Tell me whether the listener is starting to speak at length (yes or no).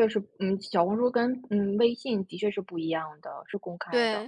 yes